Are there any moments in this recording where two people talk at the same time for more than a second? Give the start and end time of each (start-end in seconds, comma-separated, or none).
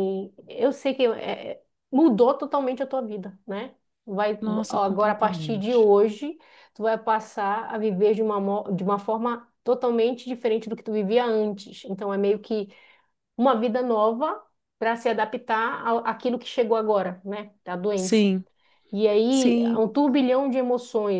4.4-5.9